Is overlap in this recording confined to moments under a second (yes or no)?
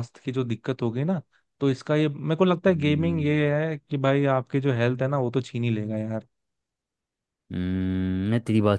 yes